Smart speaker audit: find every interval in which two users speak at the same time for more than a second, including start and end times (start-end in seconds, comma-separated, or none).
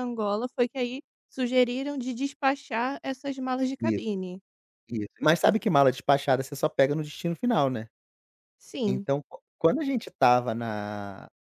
none